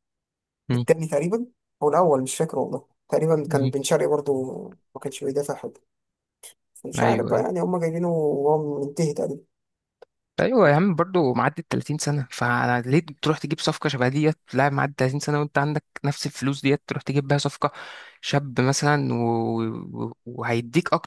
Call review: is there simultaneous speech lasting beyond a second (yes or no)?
no